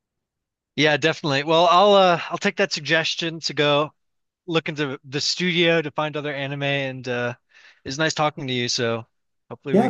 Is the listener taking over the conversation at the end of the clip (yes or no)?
yes